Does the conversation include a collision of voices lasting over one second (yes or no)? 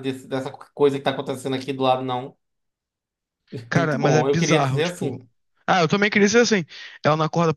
yes